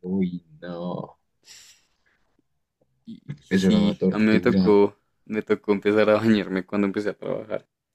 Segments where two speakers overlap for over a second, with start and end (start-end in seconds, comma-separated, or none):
3.5-4.8